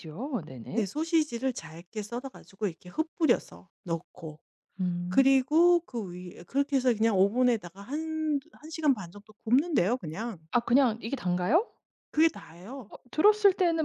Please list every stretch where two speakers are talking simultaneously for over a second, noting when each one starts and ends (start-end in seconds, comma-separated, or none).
none